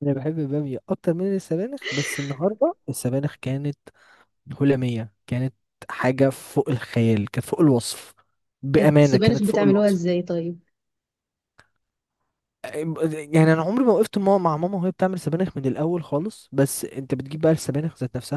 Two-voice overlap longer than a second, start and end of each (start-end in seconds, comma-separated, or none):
8.8-10.0